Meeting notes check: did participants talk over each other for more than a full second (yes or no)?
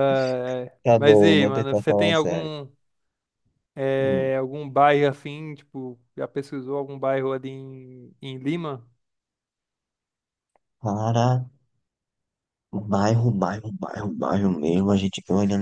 yes